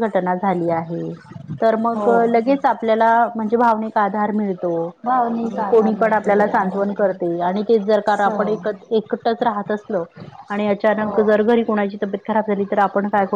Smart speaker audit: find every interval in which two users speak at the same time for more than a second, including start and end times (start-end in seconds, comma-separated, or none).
5.4-6.9